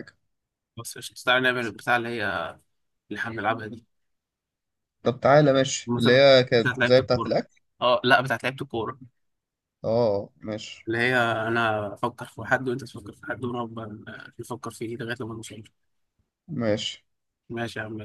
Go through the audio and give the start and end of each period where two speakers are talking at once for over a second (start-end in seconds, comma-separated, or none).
5.9-7.3